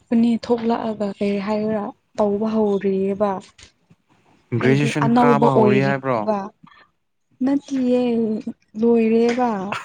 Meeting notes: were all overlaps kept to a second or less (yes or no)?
no